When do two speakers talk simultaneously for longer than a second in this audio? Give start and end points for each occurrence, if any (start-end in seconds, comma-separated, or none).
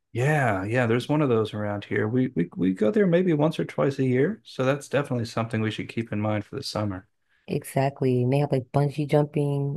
none